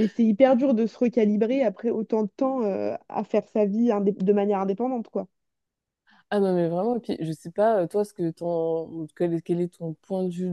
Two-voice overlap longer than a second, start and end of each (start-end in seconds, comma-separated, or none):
none